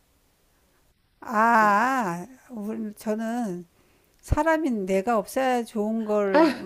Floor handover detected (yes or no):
no